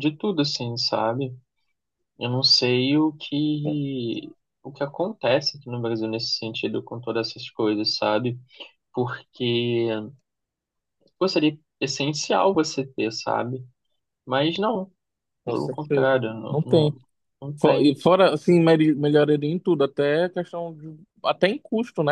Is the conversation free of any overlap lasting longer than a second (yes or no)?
no